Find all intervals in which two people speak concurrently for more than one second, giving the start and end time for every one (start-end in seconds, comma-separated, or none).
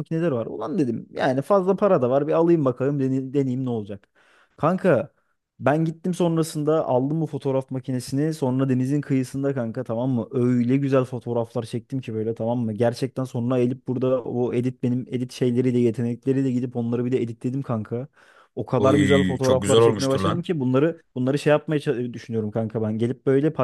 18.8-20.4